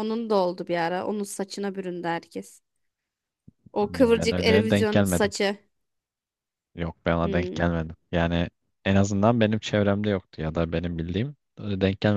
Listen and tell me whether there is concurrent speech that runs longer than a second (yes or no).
yes